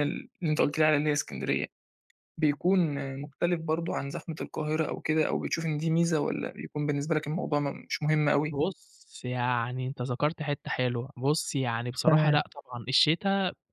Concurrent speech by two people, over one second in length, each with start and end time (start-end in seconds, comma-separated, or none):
none